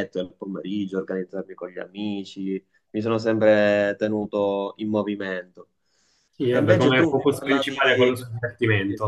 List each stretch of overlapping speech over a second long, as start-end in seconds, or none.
6.5-8.2